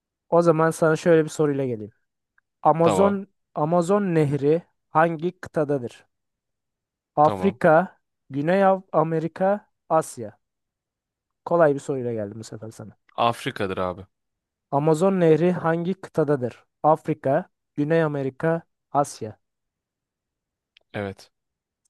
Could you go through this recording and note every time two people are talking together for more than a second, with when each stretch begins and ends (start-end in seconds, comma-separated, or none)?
none